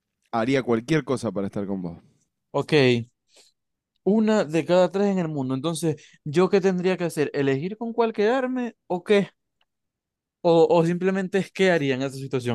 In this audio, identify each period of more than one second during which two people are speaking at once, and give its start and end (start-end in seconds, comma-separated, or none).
none